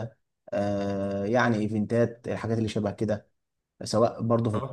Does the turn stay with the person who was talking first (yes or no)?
no